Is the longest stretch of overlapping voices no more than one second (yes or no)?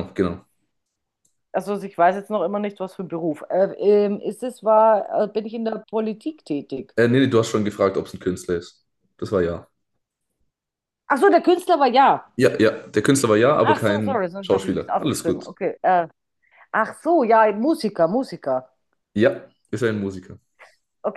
no